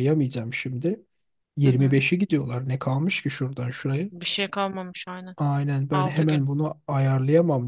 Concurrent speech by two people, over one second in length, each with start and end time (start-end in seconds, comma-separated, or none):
none